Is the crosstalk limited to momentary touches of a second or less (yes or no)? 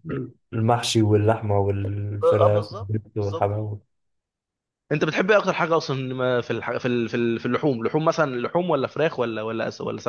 no